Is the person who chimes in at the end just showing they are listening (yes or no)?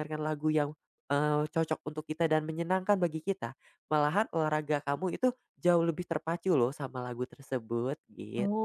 no